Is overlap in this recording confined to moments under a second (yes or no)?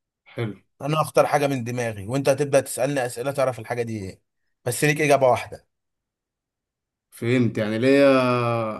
yes